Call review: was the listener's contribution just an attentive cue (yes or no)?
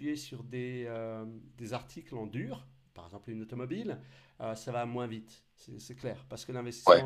yes